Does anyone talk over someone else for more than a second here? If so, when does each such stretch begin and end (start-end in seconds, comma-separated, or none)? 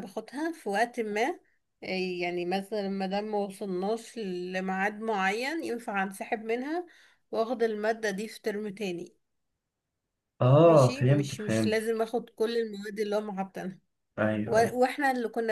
10.6-12.0